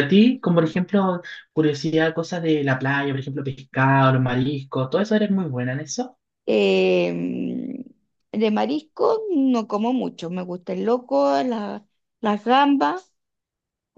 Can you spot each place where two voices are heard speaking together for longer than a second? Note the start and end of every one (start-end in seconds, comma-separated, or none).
none